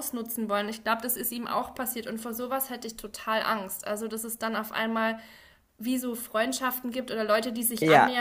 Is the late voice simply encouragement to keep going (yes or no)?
yes